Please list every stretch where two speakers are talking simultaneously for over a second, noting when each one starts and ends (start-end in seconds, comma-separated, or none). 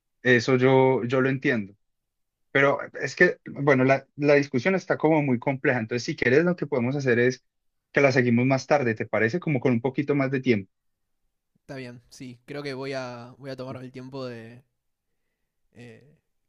none